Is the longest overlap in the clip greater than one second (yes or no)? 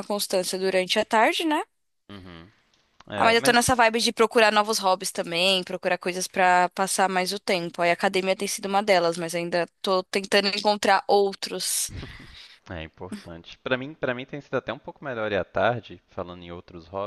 no